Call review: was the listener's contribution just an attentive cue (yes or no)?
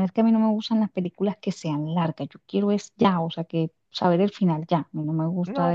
no